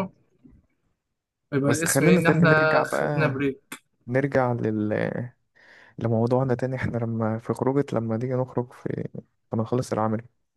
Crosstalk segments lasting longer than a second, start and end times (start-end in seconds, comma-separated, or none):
1.7-3.3